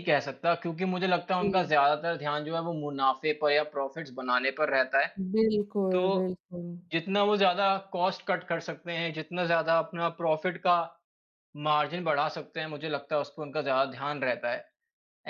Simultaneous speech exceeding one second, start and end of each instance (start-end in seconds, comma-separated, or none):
none